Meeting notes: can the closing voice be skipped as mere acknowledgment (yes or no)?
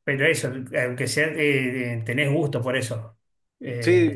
no